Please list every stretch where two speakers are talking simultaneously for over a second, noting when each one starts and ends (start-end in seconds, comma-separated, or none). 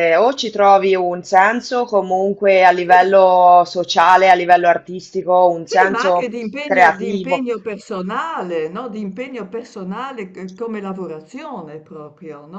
5.7-7.5